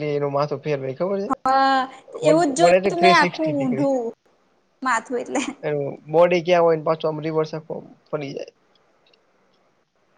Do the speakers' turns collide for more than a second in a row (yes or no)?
yes